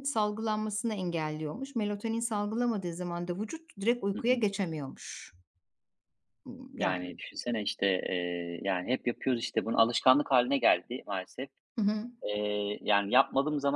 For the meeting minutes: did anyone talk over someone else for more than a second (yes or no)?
no